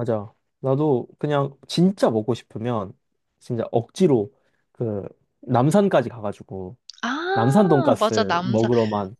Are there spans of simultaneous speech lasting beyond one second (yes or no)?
yes